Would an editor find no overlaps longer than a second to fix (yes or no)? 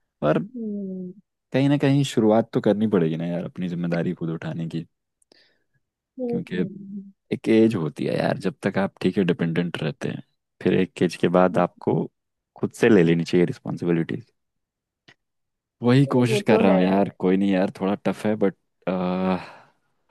yes